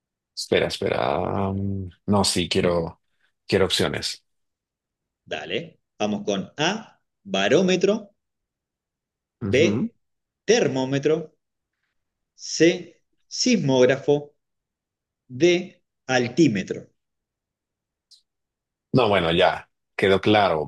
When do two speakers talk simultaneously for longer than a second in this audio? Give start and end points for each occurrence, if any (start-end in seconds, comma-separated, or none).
none